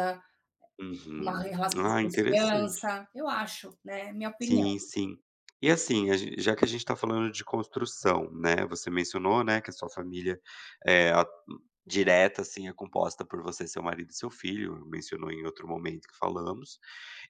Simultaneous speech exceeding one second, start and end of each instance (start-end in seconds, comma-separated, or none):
1.2-2.9